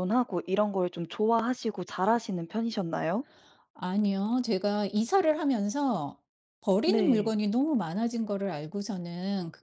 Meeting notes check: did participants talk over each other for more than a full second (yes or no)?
no